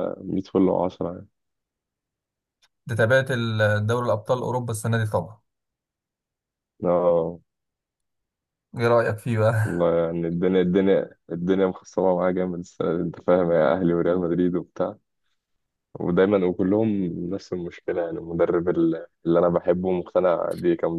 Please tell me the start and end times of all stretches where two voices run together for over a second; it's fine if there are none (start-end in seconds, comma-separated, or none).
none